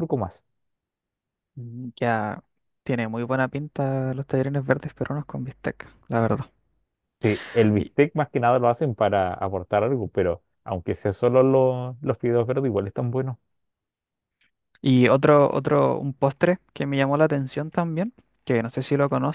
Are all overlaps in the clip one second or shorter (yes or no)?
yes